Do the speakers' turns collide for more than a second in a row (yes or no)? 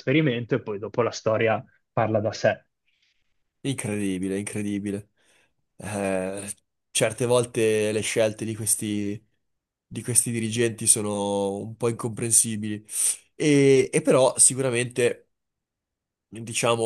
no